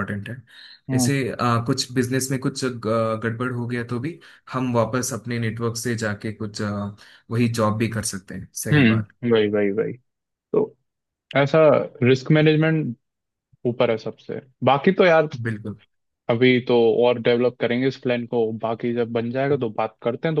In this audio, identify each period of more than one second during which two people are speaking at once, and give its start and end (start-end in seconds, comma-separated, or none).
none